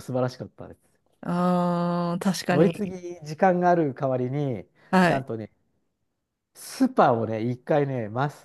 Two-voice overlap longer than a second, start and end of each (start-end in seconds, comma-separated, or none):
none